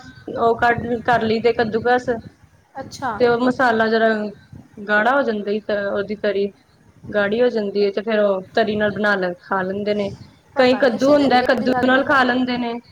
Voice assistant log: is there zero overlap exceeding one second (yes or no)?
no